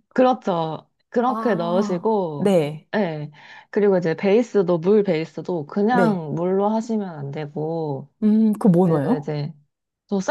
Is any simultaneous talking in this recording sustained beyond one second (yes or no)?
yes